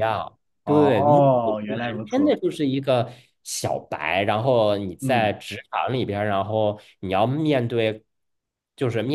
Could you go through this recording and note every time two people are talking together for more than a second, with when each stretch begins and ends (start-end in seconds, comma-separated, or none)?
0.6-2.3